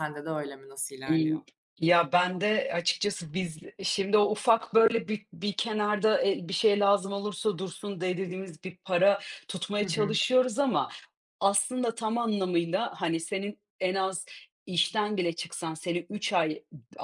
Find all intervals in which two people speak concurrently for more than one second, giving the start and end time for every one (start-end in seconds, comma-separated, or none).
none